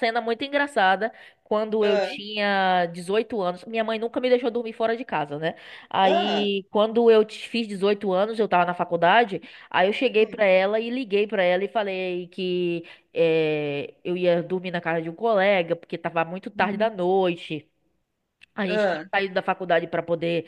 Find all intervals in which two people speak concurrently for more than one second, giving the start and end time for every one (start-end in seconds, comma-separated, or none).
none